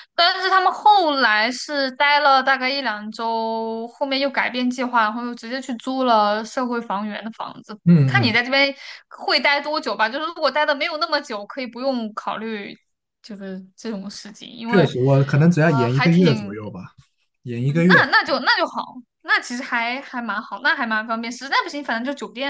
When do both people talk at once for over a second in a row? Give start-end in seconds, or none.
14.7-16.5